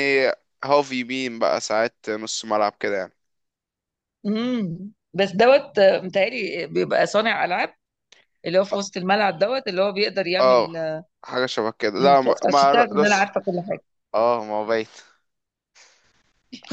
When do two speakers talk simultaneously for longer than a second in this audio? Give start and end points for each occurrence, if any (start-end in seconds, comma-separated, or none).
12.0-13.3